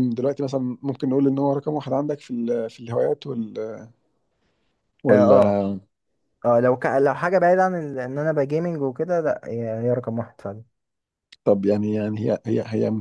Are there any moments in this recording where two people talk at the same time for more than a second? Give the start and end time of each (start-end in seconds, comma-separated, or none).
none